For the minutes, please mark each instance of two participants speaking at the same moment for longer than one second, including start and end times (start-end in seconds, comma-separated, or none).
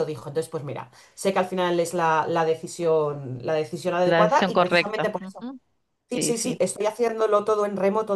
4.0-5.5